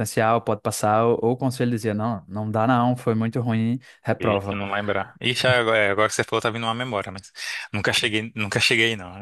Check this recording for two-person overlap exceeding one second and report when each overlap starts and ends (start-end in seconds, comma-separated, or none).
none